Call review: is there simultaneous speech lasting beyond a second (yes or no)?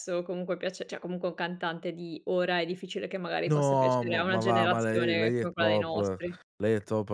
yes